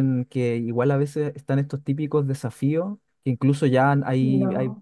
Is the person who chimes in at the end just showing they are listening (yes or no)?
yes